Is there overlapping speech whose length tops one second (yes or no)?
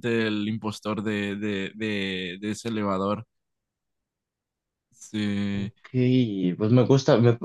no